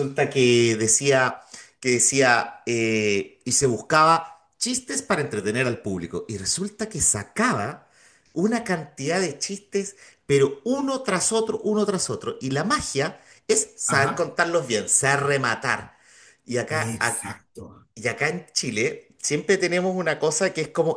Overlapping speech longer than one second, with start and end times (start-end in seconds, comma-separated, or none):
none